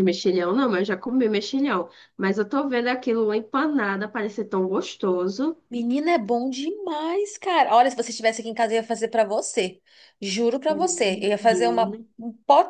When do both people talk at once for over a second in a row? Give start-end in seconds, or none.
10.7-12.1